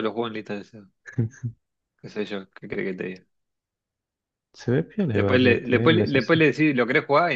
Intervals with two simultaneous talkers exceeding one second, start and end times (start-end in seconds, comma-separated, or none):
5.1-6.4